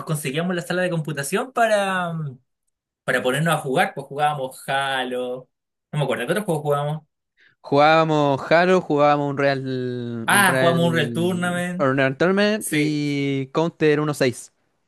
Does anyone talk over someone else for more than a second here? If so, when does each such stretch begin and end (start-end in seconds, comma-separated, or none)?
10.3-11.9